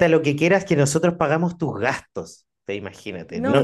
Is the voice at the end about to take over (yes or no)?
no